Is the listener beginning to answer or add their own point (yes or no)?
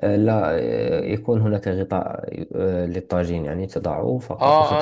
yes